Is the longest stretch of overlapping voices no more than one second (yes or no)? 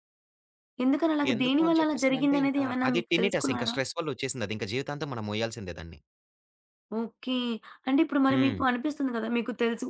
no